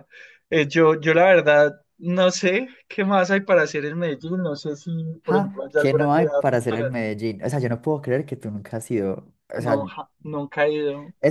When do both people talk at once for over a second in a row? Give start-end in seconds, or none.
5.3-6.9